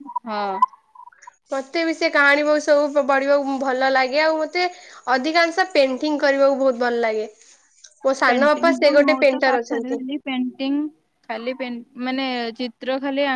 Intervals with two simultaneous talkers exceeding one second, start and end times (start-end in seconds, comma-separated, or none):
8.3-10.0